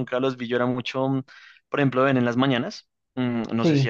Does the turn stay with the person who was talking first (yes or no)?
yes